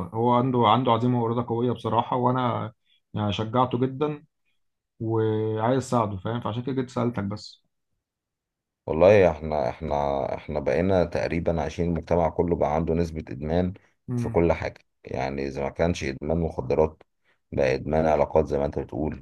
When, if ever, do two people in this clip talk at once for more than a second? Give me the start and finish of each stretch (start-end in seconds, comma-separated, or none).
none